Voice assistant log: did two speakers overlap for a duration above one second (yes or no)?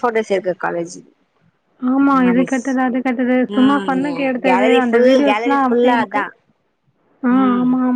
yes